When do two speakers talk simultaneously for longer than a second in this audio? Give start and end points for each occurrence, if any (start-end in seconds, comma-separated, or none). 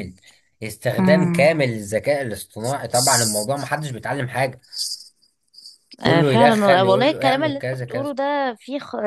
6.1-8.1